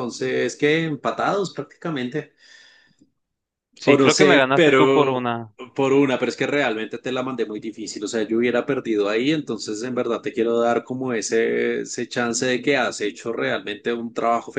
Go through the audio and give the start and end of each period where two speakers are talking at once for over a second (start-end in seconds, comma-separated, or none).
3.8-5.3